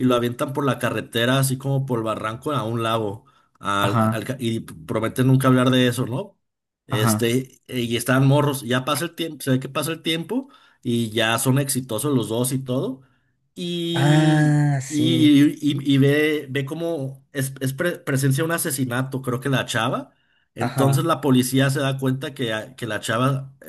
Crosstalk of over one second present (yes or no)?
yes